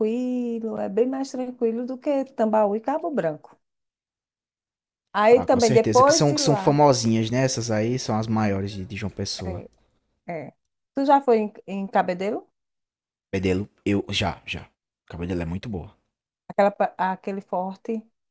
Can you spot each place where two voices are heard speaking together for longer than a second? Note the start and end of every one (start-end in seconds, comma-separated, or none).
5.3-6.8